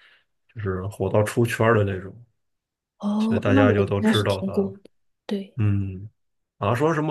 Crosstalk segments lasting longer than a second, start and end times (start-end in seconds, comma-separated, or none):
3.2-4.7